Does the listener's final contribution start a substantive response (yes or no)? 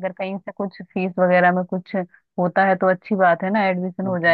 yes